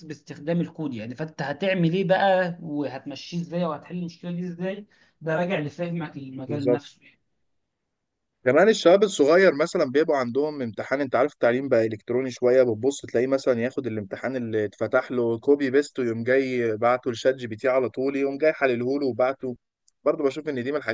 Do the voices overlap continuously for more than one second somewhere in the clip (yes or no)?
no